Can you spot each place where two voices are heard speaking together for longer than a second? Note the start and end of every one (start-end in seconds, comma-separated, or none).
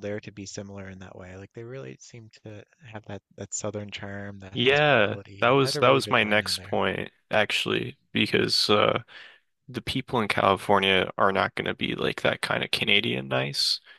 4.5-6.7